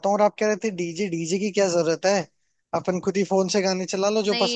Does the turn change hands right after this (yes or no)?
yes